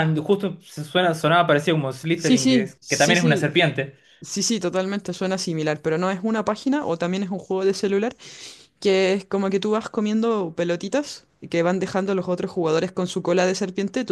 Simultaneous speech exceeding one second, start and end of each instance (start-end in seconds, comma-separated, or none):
2.1-3.5